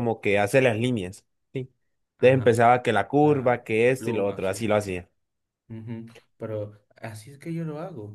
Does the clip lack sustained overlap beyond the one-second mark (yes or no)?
no